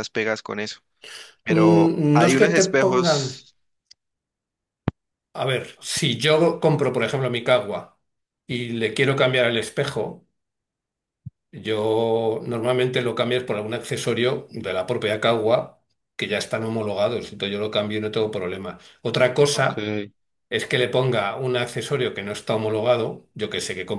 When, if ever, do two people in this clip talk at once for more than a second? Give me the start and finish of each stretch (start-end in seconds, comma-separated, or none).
1.5-3.3